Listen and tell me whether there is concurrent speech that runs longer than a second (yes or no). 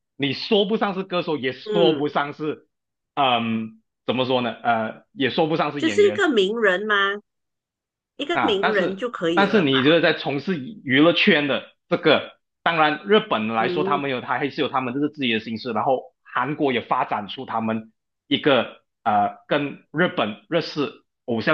yes